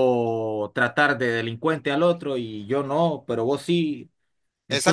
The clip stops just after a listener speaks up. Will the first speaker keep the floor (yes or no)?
no